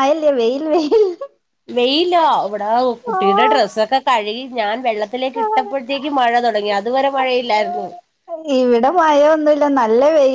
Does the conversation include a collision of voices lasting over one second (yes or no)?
no